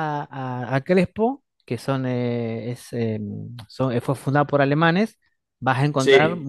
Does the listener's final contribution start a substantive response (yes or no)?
no